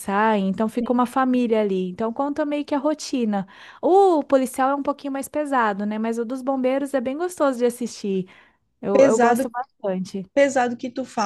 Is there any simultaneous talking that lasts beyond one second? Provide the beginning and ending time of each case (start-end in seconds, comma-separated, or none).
none